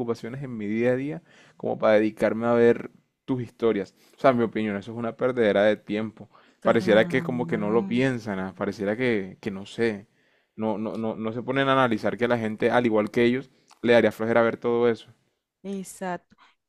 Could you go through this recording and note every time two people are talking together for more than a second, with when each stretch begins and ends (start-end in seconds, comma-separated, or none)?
6.6-8.0